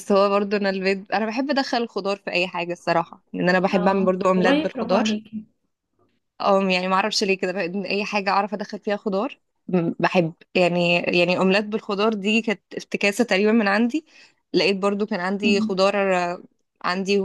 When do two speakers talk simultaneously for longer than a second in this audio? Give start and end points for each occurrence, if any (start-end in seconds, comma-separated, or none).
3.7-5.0